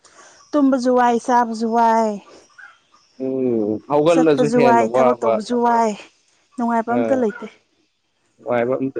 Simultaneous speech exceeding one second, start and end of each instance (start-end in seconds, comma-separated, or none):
4.1-5.3